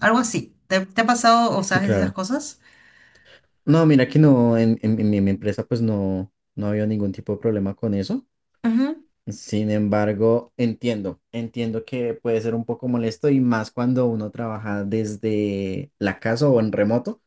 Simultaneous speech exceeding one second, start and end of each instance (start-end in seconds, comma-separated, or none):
none